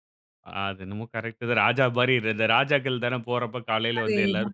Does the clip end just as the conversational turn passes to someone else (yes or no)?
yes